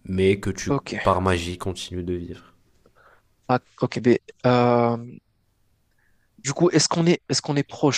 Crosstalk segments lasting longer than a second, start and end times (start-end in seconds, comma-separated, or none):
none